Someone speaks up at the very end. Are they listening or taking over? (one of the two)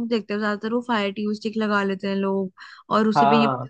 listening